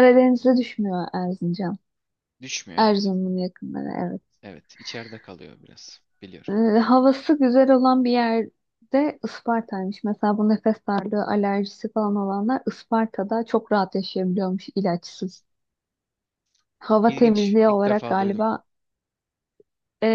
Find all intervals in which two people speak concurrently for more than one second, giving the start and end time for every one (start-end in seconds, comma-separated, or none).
17.0-18.4